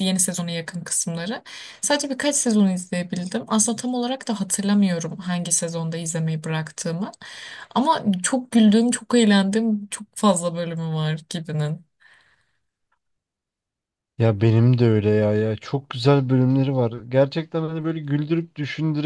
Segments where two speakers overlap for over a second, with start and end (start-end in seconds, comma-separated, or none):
none